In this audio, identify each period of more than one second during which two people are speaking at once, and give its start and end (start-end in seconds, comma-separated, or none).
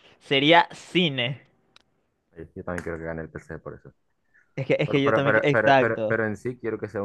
4.8-6.2